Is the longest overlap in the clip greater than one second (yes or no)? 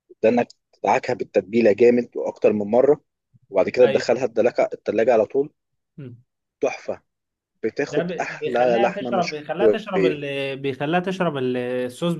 yes